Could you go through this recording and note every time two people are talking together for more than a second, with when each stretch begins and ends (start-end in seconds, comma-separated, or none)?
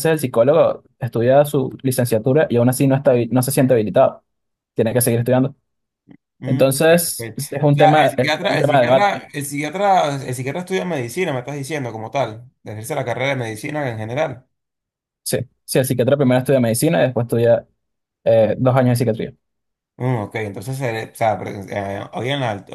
6.4-9.3